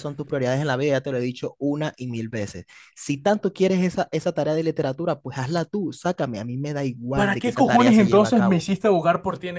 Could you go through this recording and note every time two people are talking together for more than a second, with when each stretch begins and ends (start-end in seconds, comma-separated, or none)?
7.1-8.7